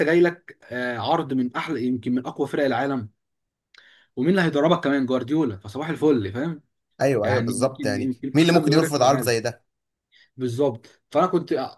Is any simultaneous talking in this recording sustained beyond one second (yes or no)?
yes